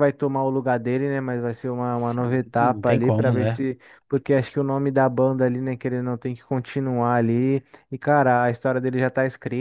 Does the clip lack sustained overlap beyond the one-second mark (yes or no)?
no